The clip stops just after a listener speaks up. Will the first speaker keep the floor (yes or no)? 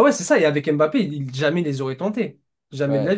yes